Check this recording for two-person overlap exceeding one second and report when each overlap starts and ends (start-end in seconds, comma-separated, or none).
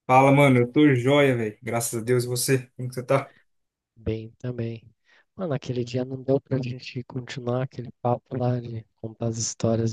none